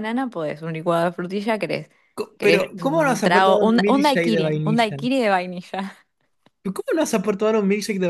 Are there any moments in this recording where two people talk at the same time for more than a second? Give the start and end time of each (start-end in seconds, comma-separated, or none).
2.4-5.0